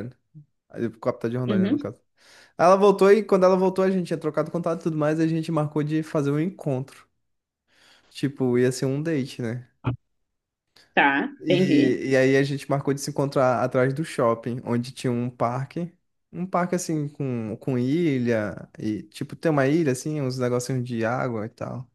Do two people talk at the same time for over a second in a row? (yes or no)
no